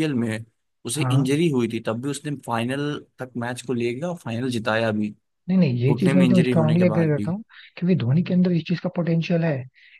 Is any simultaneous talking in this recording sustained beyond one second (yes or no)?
yes